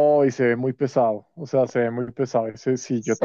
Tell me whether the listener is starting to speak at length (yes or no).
no